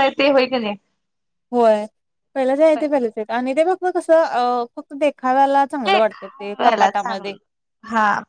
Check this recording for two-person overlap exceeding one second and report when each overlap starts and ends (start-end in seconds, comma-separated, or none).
6.1-7.3